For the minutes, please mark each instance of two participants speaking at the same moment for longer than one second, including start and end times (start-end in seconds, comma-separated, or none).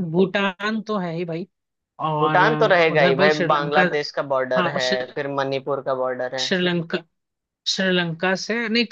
2.2-3.8